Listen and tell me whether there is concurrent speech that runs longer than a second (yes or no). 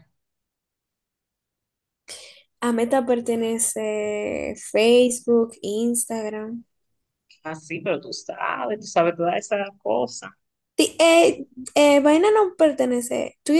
no